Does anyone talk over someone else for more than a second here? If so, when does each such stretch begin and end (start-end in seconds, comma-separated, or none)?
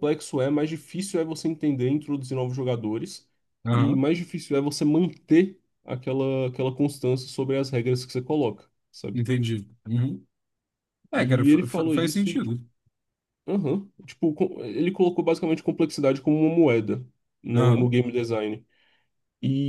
11.1-12.5